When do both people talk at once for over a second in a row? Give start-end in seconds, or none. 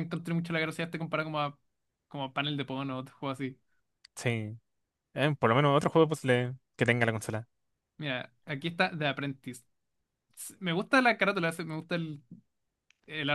none